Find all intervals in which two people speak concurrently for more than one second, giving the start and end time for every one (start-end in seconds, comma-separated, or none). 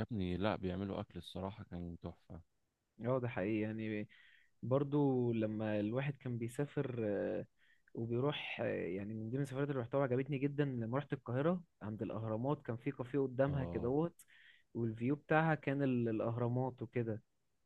none